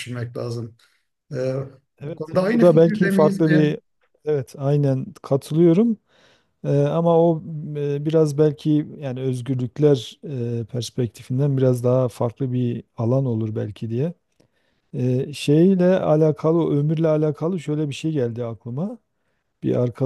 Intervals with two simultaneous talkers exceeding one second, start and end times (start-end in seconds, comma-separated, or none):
2.0-3.6